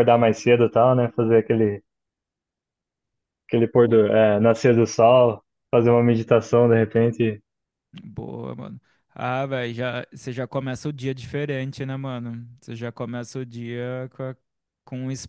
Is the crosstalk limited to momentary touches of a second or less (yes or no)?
yes